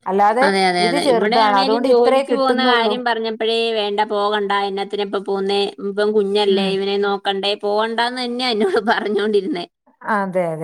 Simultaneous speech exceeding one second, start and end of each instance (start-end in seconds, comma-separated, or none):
0.9-2.9